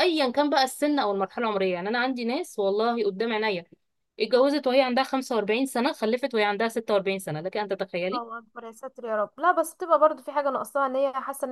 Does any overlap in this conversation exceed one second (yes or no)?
no